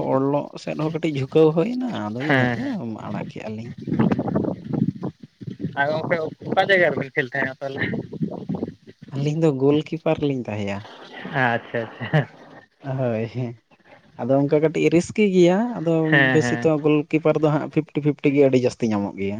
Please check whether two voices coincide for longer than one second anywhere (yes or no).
no